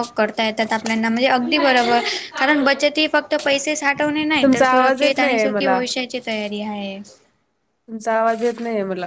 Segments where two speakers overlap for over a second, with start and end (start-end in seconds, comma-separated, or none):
4.4-5.8